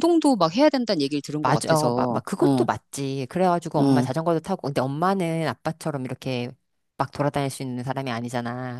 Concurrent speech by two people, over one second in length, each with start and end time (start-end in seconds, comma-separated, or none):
1.4-2.7